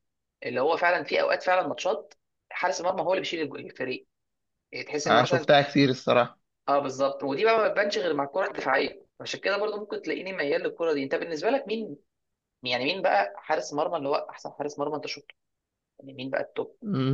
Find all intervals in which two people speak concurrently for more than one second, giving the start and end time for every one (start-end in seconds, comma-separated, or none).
none